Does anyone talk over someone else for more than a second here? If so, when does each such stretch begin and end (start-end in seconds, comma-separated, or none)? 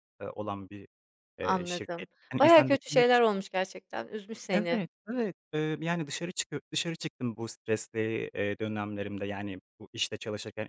1.4-3.1